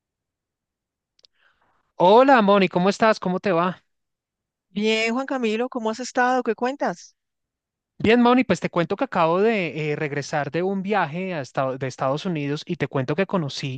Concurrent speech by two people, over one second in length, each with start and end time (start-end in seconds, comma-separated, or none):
none